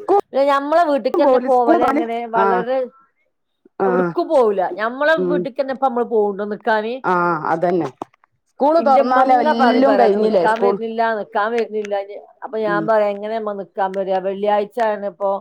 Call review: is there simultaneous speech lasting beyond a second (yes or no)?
yes